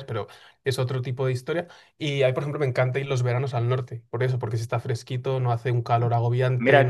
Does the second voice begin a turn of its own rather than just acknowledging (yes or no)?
yes